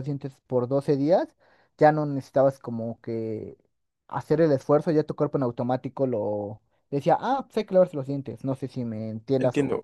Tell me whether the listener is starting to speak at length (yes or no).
yes